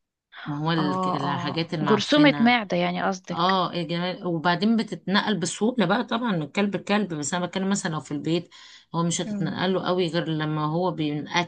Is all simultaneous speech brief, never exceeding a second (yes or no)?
no